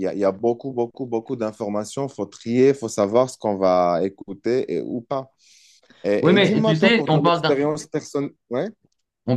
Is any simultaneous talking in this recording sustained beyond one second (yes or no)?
yes